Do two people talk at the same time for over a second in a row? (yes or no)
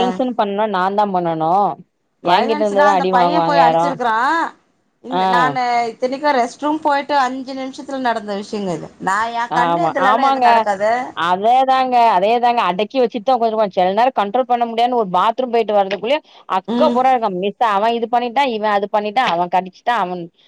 yes